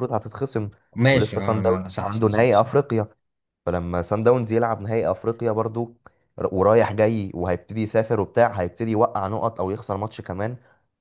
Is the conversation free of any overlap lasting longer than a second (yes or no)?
no